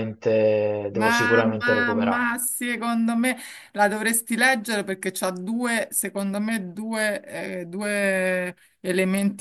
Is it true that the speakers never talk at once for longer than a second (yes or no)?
no